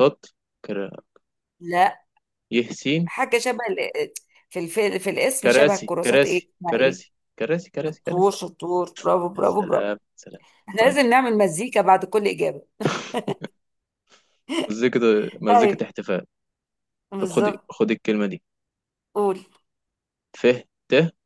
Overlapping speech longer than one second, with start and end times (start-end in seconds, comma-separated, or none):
5.4-7.0